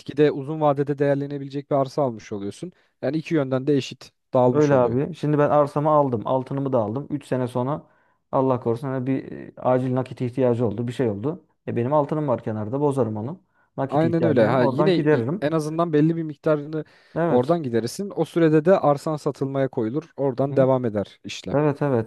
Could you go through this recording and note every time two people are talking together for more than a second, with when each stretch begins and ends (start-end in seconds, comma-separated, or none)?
13.9-15.5